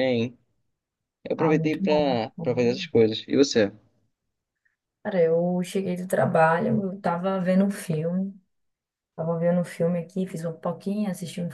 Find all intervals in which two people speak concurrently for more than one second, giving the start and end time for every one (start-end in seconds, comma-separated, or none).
1.4-2.9